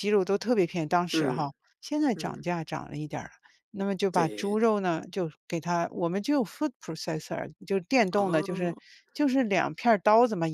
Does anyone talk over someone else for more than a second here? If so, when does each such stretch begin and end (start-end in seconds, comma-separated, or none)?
none